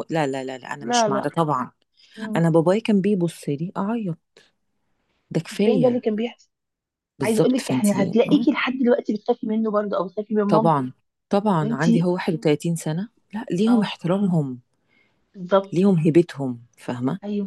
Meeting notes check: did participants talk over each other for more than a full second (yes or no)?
yes